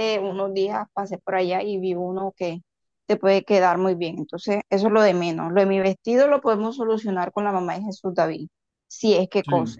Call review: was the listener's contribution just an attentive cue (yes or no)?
yes